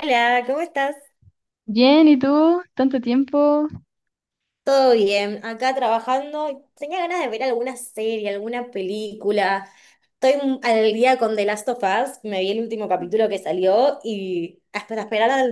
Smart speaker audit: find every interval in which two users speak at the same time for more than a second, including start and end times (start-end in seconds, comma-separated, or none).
none